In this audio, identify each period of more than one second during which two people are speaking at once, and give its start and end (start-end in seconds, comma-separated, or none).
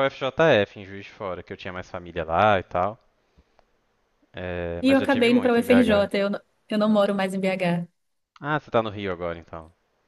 4.8-6.1